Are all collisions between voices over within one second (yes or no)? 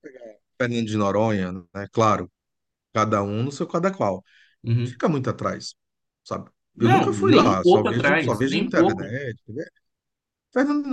no